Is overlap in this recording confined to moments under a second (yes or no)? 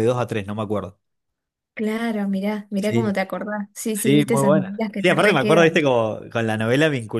no